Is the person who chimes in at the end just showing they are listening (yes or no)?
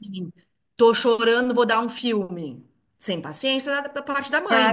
no